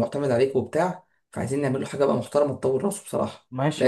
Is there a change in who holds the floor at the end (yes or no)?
yes